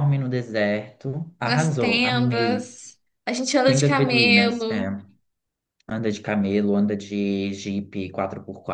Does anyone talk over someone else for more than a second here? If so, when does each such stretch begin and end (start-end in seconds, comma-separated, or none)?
1.4-2.7, 3.6-4.9